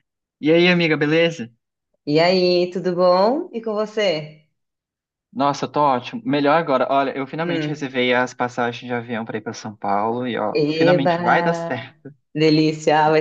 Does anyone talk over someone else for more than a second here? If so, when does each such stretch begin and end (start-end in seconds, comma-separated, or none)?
10.5-11.9